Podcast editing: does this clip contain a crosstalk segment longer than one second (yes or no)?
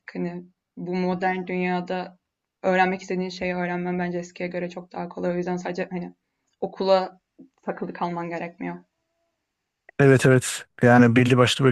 no